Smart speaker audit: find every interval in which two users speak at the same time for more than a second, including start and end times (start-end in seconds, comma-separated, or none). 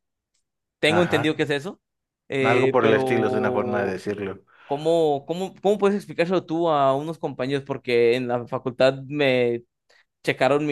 2.4-4.0